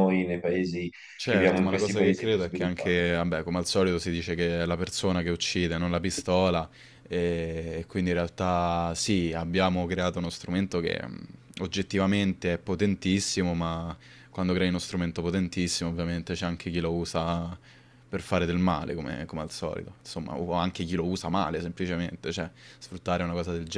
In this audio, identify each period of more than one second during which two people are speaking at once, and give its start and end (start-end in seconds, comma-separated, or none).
1.1-3.0